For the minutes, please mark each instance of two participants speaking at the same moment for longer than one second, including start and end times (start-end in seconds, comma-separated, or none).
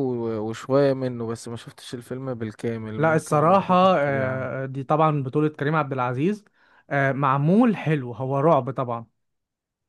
3.0-4.7